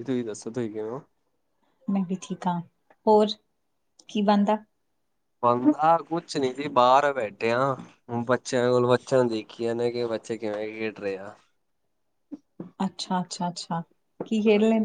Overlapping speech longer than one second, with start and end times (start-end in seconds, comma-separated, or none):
none